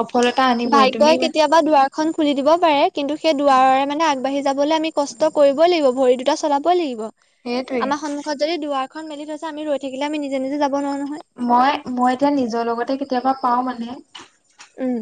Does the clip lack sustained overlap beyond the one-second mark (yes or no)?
yes